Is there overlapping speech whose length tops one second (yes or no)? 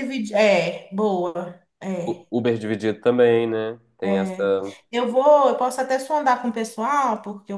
no